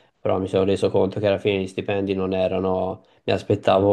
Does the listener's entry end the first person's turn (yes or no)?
no